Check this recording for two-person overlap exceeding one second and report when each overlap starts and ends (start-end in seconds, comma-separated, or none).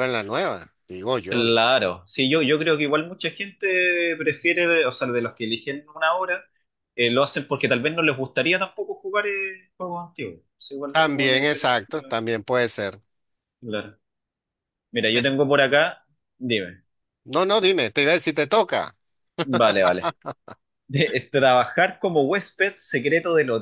10.9-12.1